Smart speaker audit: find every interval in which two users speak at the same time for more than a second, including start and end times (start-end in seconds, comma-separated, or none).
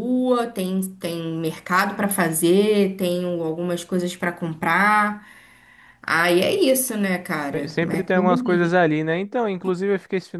7.5-8.7